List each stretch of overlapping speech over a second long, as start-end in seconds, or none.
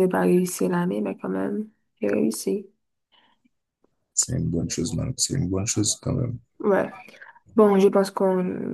none